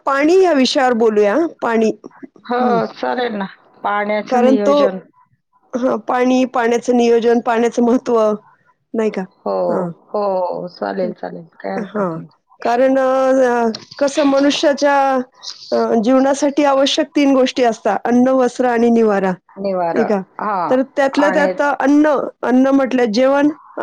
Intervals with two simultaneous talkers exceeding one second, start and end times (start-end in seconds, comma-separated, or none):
none